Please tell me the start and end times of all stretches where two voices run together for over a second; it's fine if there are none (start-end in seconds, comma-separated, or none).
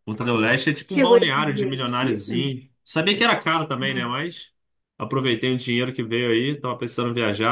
0.8-2.5